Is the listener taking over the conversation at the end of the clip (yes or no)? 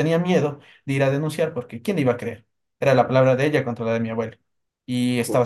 no